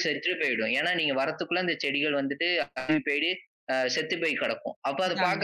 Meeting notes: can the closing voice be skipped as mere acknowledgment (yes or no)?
yes